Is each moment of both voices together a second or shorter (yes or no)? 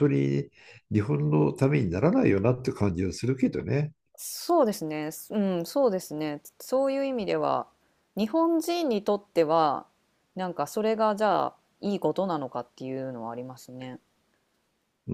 yes